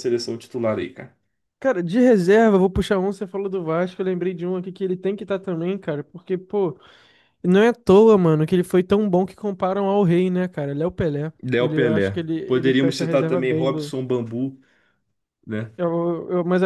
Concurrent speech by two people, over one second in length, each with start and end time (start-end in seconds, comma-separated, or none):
11.4-13.7